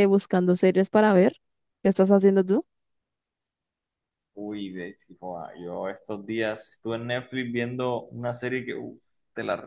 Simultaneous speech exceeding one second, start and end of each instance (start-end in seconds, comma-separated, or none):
none